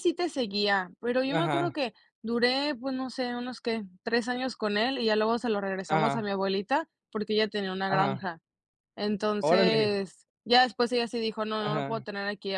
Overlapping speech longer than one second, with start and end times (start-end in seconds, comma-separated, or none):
none